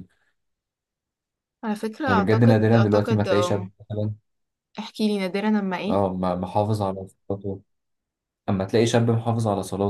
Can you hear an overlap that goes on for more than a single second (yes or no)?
yes